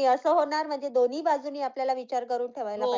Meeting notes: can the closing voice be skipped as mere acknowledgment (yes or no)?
no